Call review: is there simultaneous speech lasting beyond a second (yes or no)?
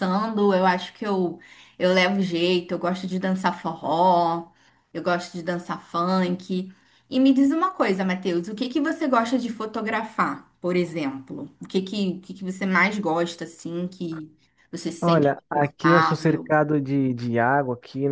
yes